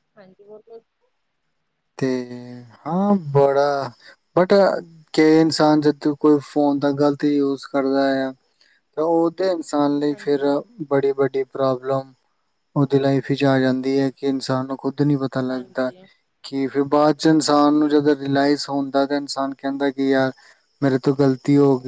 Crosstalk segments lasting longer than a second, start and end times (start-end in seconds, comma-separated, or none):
none